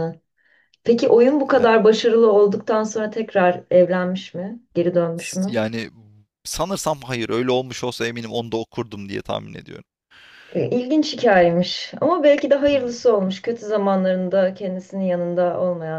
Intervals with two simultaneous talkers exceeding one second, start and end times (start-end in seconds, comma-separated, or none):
none